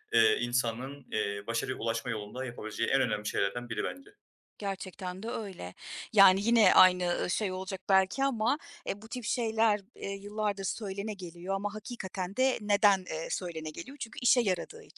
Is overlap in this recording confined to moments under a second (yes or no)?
yes